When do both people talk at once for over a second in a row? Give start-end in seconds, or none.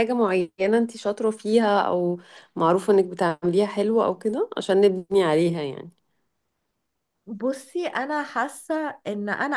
none